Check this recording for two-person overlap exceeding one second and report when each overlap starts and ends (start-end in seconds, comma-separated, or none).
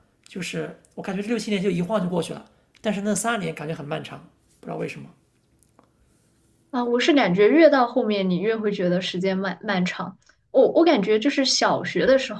none